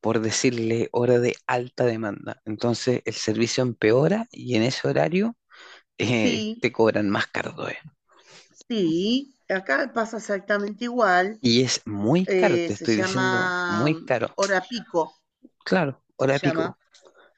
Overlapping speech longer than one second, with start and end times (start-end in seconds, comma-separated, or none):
12.3-14.3